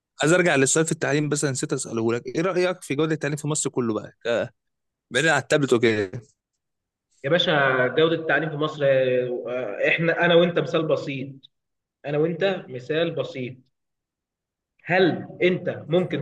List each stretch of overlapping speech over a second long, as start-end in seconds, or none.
none